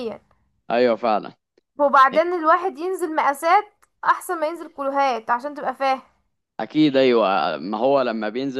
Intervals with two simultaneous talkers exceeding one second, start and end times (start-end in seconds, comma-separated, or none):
none